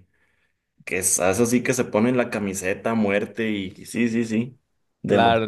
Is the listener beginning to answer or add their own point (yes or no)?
yes